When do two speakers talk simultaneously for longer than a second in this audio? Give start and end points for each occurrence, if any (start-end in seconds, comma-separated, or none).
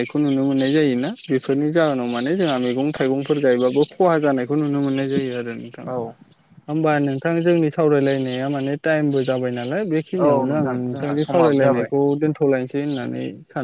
10.2-11.9